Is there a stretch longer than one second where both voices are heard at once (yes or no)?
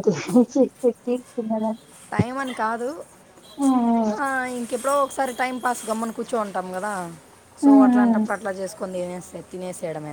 no